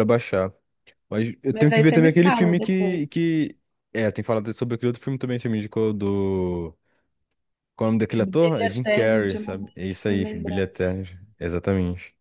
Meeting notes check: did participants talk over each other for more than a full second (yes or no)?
yes